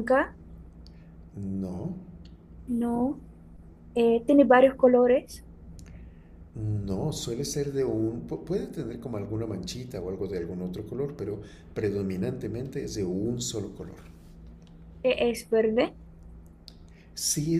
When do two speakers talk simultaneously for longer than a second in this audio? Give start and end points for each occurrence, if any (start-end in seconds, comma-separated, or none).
none